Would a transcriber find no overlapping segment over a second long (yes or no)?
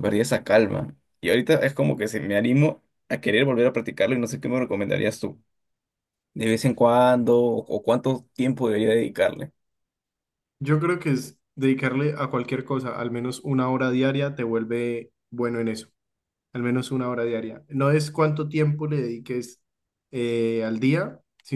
yes